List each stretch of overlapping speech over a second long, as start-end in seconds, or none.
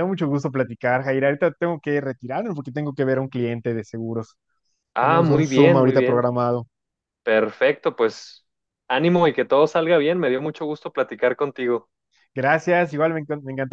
5.0-6.3